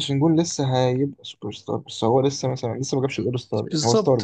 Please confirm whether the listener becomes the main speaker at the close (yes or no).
yes